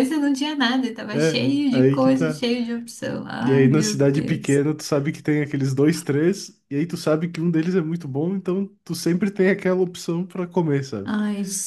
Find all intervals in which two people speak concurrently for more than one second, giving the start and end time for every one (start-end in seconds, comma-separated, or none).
1.1-2.5, 3.4-4.6